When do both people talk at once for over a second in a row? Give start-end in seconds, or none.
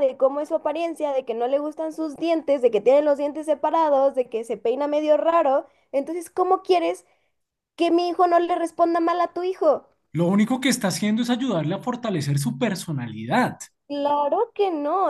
none